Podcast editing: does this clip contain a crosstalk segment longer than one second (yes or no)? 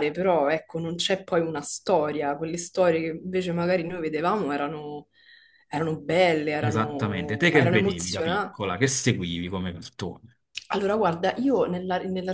yes